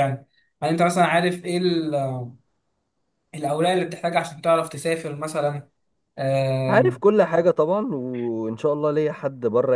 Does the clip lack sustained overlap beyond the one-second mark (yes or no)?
yes